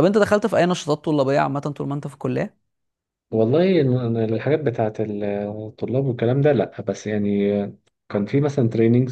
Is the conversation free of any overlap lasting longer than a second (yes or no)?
yes